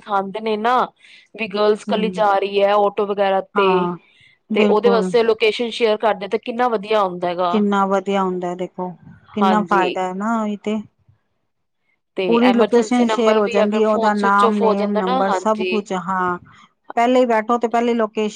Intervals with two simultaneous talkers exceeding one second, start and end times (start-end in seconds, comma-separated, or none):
12.2-15.8